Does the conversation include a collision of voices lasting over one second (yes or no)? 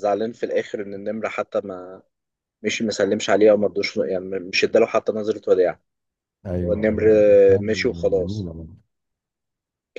yes